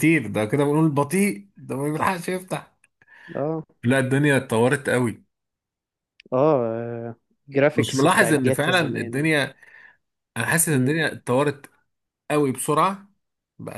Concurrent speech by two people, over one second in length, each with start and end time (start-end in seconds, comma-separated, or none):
7.7-9.3